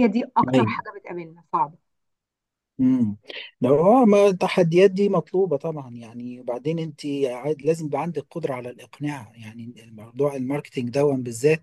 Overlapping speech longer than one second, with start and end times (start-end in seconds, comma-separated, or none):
none